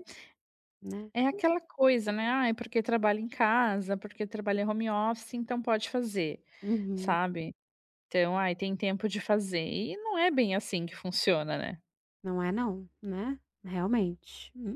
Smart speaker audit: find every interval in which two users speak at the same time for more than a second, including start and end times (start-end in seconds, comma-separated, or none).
none